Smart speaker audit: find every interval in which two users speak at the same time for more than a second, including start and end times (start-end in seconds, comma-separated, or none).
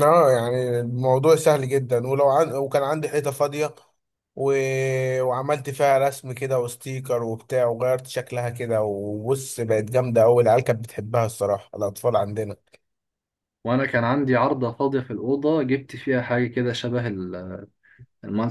none